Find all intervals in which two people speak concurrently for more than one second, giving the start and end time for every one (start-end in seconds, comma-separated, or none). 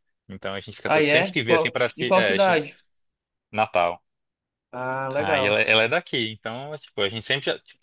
0.9-2.6